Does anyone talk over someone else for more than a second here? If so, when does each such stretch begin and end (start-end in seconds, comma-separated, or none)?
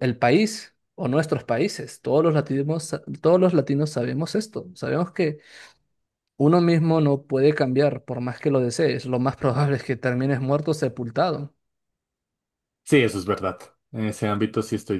none